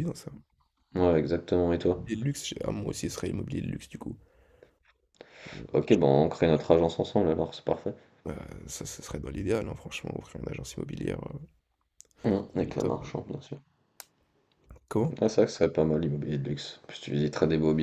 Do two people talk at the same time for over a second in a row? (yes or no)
no